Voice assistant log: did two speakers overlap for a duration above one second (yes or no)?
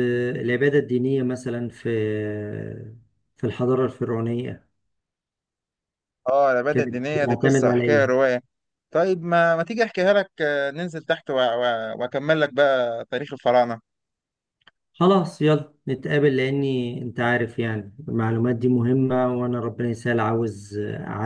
yes